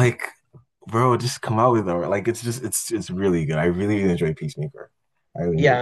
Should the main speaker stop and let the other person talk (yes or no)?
yes